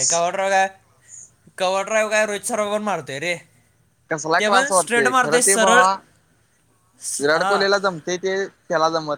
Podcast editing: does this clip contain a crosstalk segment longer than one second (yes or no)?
yes